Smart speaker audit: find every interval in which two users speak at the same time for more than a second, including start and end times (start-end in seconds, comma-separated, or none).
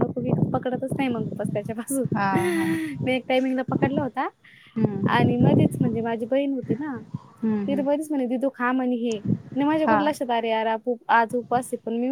none